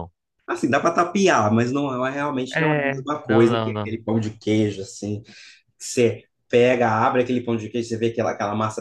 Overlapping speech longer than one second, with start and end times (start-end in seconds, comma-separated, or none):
2.5-4.0